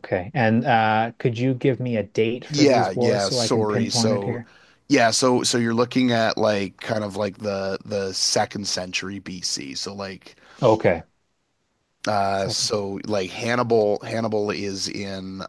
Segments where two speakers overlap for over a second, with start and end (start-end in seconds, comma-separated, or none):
2.5-4.4